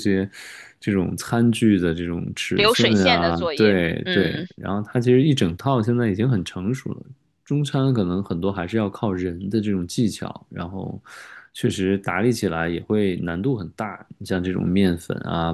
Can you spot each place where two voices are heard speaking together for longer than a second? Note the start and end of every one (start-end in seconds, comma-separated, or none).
2.5-4.5